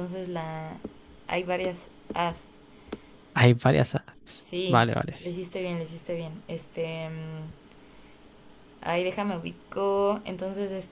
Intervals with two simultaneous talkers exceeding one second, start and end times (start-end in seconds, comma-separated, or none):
none